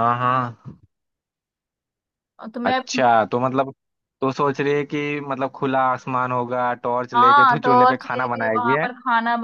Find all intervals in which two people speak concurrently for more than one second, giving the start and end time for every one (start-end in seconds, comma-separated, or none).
7.1-8.9